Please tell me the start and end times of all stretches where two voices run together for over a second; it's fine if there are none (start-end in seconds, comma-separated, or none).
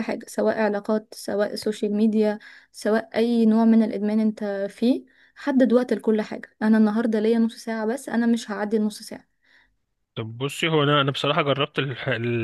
none